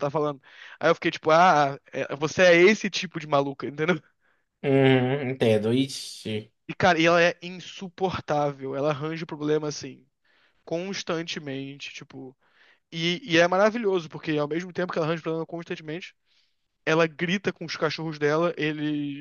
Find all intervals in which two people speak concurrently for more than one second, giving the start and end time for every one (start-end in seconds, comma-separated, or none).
none